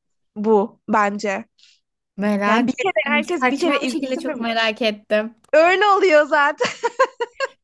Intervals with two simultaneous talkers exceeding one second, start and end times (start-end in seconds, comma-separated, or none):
2.5-4.5